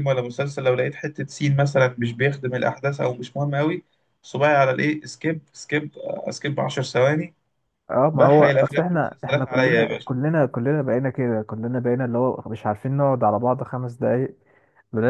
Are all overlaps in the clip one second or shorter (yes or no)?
no